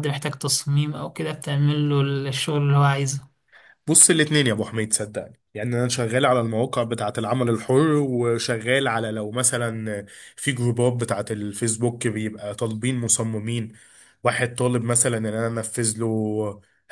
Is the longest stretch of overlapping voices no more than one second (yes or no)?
yes